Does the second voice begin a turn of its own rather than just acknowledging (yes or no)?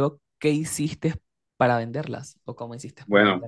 yes